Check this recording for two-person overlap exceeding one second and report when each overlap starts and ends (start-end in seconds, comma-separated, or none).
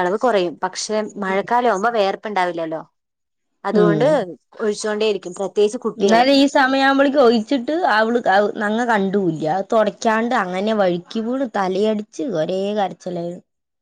none